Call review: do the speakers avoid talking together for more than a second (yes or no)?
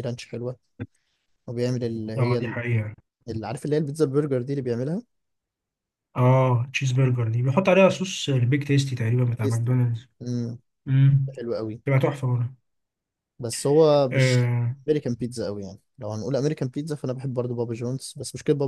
yes